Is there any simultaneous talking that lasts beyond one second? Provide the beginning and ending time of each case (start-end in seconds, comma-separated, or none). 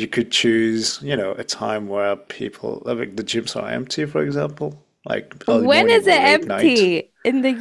5.5-6.9